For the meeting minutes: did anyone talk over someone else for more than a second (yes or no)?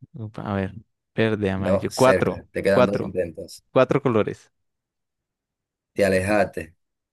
yes